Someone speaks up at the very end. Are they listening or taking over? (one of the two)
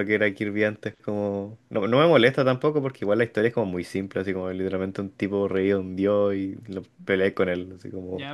taking over